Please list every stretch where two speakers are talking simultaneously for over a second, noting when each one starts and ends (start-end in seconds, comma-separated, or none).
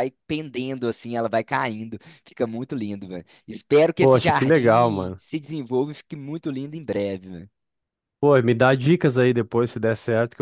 4.0-5.2